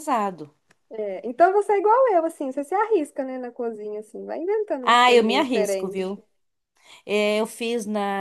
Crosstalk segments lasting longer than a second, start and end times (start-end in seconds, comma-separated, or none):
4.8-6.2